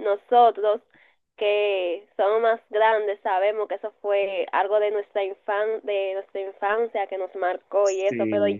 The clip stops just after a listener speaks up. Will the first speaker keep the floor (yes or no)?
yes